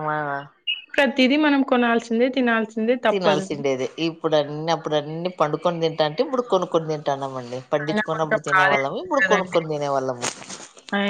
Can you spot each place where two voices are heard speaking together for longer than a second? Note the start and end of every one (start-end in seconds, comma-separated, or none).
7.9-9.6